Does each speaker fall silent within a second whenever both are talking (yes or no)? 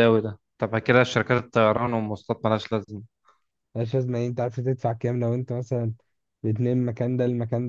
yes